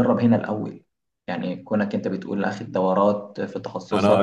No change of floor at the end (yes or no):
no